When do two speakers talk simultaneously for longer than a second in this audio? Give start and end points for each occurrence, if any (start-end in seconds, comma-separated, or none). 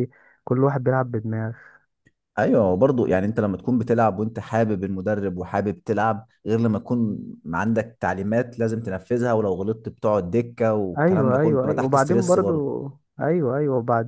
11.0-12.7